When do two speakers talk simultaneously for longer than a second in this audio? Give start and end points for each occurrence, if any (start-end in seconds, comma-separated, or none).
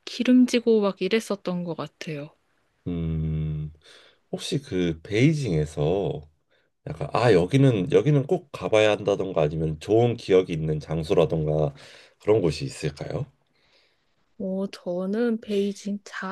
none